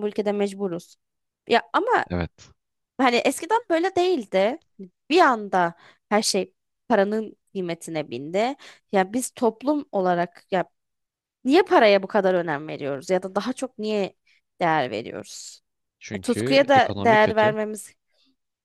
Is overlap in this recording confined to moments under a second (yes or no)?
no